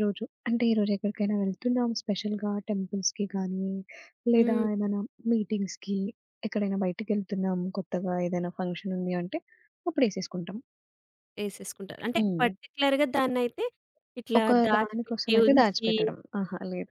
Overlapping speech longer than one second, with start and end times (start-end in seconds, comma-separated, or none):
14.4-15.9